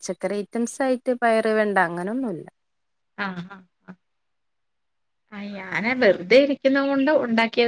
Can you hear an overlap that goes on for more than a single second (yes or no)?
no